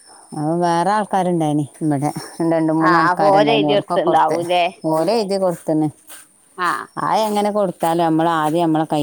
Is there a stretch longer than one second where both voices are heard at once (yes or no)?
yes